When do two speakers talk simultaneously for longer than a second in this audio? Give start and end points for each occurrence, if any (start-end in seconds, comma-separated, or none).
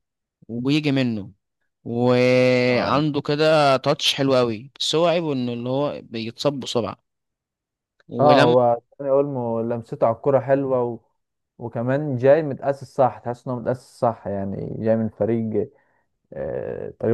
none